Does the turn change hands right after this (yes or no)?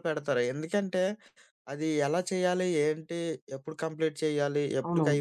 no